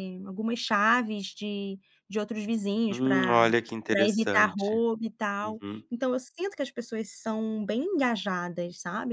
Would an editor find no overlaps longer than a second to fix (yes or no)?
no